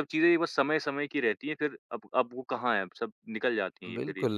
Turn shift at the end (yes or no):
yes